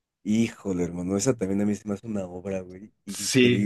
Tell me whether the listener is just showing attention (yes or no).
no